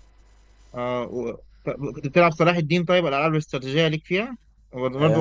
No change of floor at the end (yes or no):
no